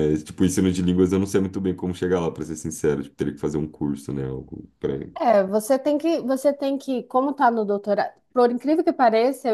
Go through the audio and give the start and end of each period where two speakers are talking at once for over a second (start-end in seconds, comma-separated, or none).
none